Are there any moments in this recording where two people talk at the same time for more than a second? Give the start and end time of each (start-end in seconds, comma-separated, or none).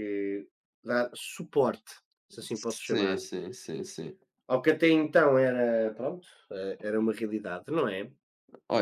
none